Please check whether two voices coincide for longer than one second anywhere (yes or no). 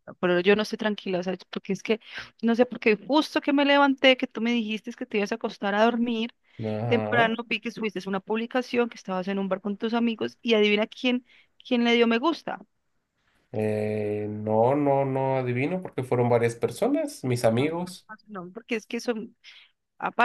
no